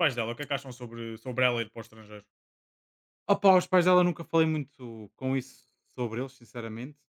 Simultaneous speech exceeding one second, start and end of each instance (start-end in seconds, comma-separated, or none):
none